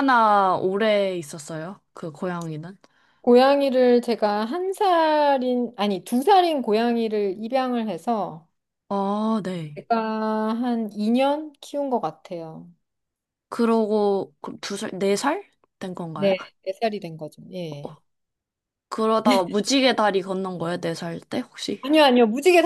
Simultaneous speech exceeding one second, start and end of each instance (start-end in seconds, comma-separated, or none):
none